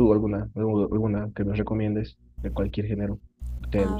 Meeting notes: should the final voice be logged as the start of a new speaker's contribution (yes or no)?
yes